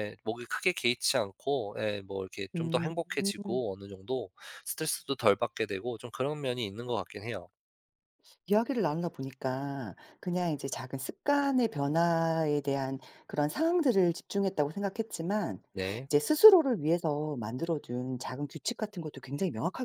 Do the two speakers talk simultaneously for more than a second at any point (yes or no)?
no